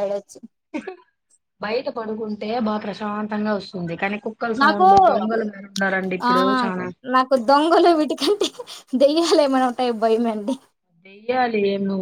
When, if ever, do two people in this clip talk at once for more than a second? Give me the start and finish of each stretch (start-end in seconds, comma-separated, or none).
none